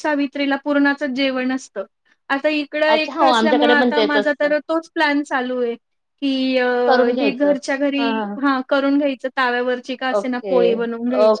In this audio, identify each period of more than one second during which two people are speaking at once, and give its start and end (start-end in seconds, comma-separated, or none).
3.0-4.5